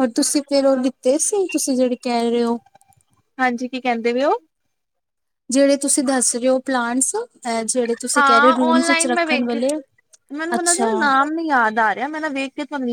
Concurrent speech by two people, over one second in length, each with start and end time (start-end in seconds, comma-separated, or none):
8.2-9.6